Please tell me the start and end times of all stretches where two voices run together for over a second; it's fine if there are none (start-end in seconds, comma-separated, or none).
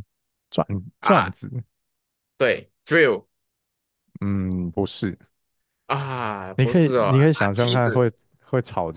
6.6-8.1